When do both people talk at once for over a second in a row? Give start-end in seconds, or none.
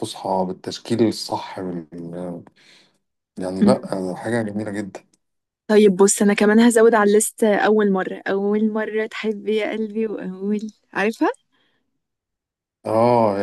none